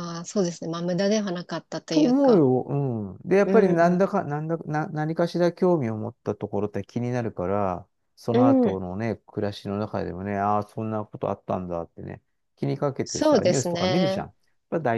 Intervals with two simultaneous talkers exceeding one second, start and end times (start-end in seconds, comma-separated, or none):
13.0-14.3